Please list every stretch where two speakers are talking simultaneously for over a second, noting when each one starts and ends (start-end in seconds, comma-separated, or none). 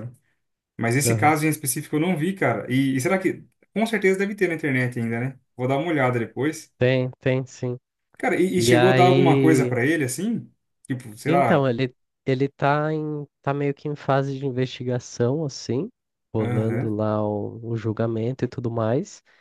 8.6-9.8